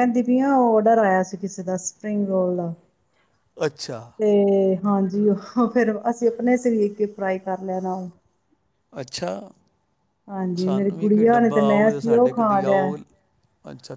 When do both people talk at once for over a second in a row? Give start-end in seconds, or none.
10.6-12.9